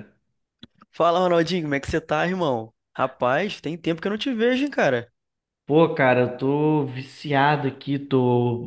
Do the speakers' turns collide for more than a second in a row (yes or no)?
no